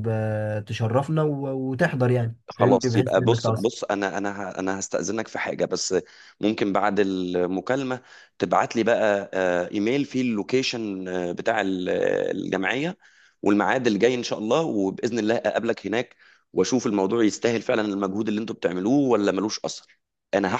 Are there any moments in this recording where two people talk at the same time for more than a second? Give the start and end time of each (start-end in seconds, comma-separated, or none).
2.5-3.7